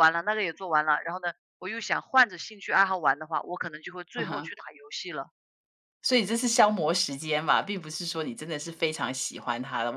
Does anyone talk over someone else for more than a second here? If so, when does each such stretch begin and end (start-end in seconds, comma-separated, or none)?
none